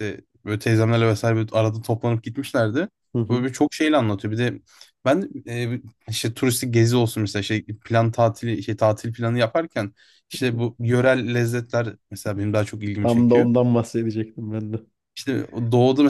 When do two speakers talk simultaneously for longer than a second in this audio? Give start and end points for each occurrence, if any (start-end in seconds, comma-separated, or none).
none